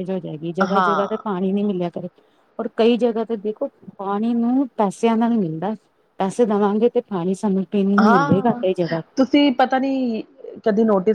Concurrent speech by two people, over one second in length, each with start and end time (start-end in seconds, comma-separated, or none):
none